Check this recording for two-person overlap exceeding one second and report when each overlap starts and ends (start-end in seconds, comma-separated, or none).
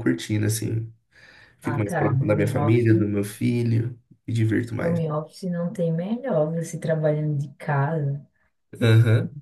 1.6-3.0